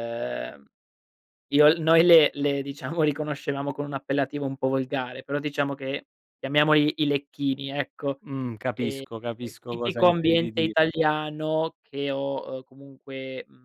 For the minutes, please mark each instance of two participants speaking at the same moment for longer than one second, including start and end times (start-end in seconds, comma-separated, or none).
9.4-10.7